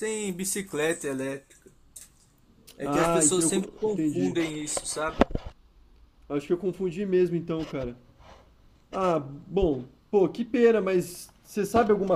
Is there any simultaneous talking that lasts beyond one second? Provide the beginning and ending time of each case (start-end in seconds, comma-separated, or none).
2.8-4.3